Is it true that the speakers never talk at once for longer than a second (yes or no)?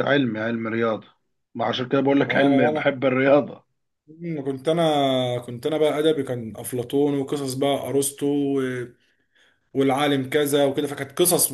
yes